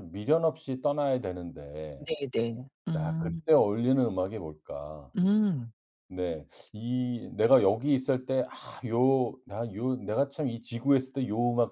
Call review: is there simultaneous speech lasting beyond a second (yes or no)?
no